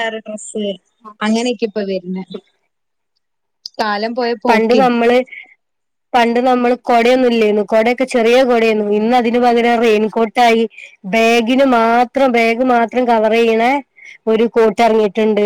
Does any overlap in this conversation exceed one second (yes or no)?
no